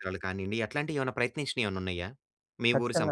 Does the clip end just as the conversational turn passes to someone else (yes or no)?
yes